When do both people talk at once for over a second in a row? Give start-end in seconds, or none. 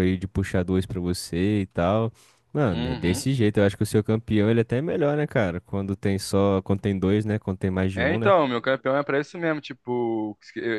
none